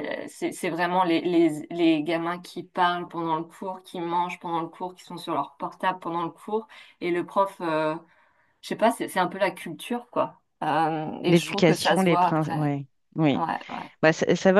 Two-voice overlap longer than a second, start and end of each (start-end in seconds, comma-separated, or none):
11.3-12.7